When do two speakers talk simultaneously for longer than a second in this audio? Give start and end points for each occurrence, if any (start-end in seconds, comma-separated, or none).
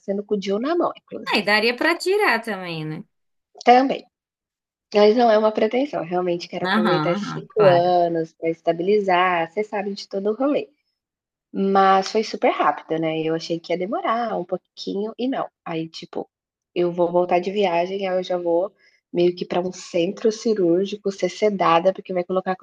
6.6-8.0